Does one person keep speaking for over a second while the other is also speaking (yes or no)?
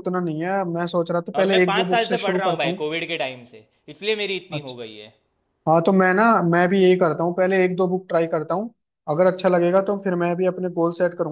yes